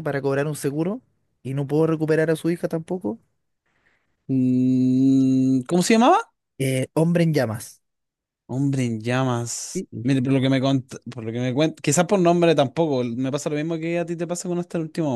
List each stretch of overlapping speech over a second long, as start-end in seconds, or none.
none